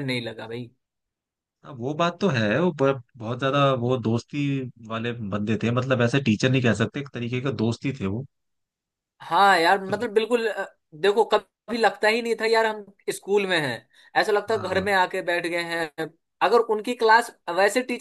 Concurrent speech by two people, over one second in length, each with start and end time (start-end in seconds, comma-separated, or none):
none